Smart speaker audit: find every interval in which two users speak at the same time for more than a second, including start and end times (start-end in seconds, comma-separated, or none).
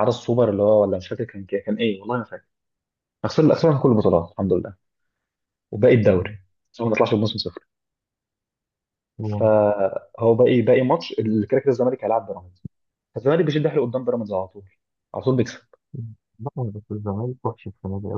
none